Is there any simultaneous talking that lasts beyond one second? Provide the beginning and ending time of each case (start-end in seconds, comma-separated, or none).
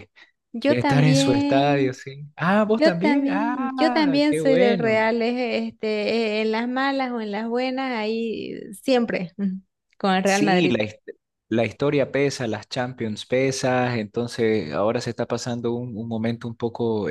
0.6-2.0, 2.6-5.0